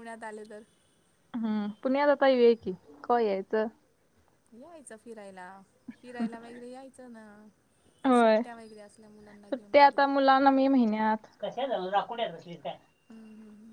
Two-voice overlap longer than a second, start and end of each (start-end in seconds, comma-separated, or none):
none